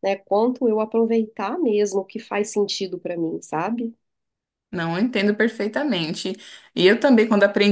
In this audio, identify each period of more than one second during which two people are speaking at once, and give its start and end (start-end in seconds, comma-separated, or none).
none